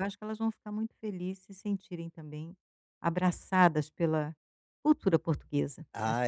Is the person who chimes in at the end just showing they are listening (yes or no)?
no